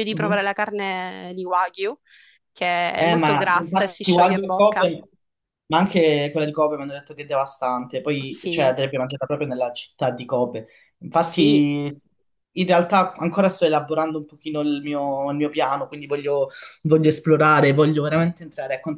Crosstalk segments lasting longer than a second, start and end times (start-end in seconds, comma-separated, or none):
3.0-4.9